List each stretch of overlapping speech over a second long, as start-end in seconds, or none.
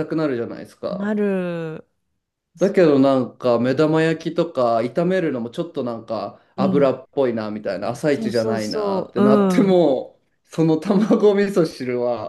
8.1-9.8